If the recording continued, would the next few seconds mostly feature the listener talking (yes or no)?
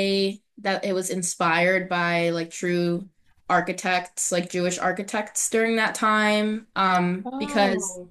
no